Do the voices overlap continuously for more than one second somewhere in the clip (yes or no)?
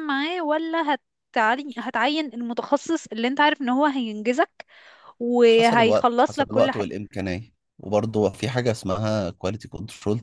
yes